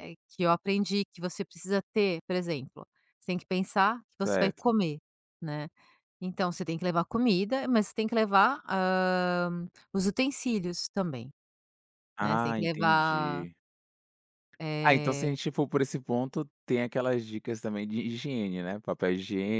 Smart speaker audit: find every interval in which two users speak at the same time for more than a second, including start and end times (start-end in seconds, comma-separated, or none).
12.2-13.4